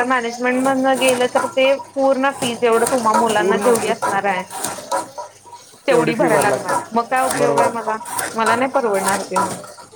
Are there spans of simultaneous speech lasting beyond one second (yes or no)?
yes